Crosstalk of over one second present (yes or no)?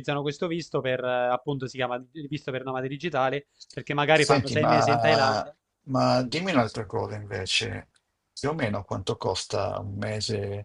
yes